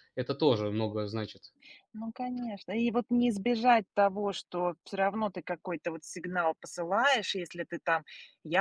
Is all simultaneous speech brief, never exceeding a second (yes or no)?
yes